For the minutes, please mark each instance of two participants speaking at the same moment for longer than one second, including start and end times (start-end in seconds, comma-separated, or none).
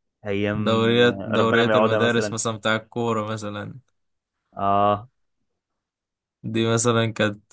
0.5-2.4